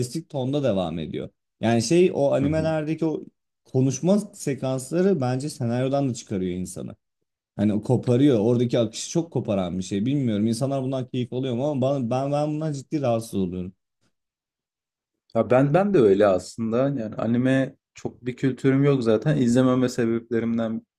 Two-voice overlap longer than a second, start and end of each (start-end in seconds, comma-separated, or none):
none